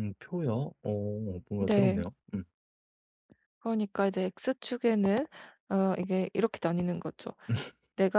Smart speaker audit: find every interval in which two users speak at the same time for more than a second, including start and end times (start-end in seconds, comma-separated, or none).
none